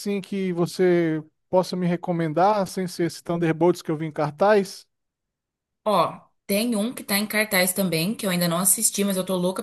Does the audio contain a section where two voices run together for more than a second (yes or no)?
no